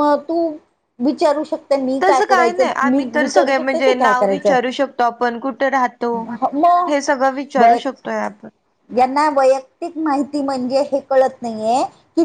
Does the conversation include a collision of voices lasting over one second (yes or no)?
yes